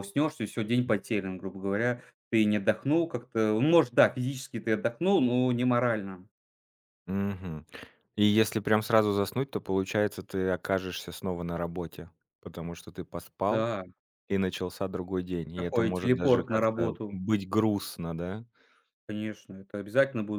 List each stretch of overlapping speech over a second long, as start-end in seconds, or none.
15.5-17.2